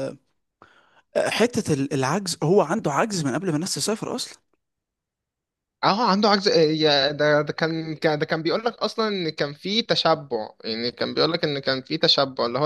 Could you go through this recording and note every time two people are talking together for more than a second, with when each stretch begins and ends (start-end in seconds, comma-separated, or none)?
none